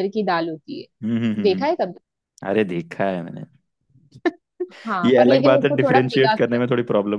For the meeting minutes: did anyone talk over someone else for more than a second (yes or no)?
yes